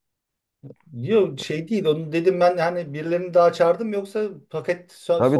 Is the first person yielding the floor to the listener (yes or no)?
yes